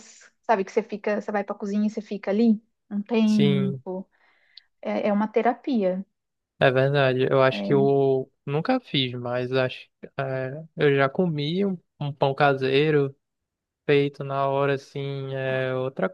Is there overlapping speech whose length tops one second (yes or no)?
no